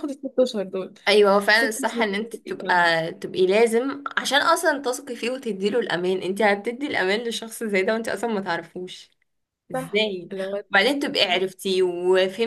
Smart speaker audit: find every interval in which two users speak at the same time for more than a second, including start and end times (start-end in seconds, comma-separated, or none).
1.5-3.0